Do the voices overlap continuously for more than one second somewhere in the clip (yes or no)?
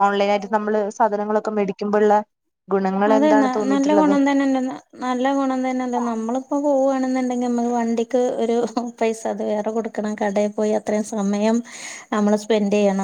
no